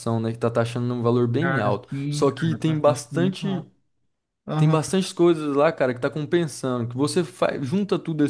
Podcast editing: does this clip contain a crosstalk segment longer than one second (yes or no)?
yes